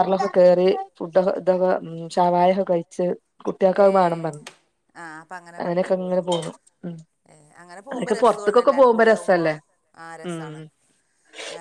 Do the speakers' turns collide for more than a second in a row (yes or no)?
yes